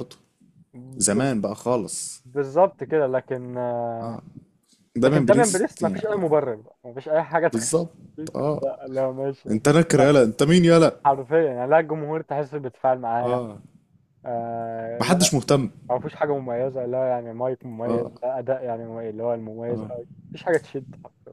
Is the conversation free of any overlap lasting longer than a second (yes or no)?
no